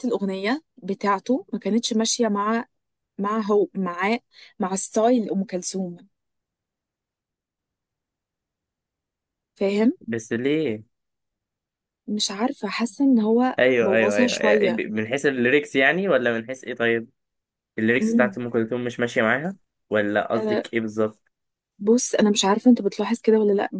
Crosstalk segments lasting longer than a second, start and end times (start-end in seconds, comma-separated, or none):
13.6-14.8